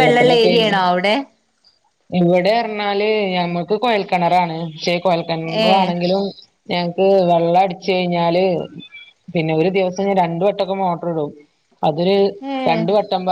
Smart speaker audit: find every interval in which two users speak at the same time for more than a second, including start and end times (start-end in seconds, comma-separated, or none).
none